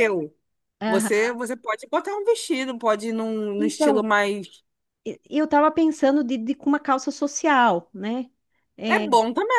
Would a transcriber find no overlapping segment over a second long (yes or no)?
yes